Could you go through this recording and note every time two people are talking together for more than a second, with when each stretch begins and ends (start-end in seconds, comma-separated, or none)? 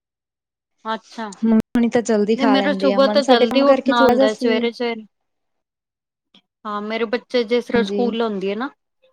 2.4-4.6